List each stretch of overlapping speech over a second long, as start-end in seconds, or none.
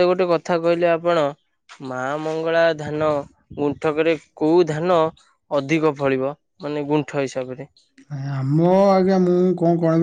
none